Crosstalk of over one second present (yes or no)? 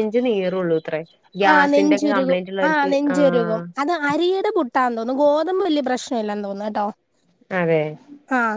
yes